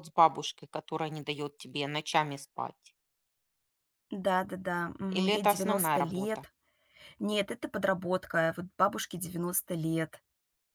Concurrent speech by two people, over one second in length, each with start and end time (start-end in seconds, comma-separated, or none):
5.1-6.5